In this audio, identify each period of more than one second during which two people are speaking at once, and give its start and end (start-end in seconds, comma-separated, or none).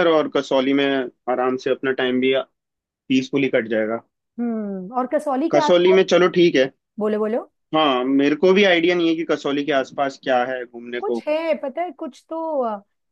none